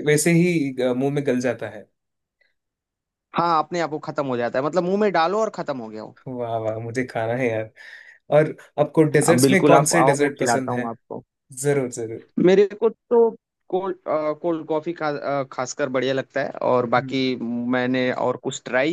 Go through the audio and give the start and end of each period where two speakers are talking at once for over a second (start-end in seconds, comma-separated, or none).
9.3-10.9